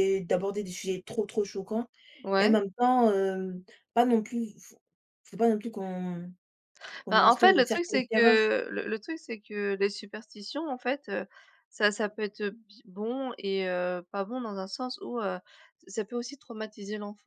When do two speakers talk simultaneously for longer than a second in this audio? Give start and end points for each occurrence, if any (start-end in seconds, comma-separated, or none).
7.1-8.4